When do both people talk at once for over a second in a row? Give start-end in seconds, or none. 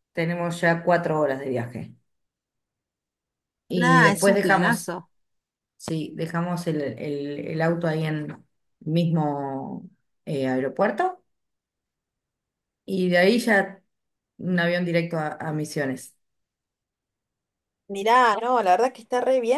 3.7-4.9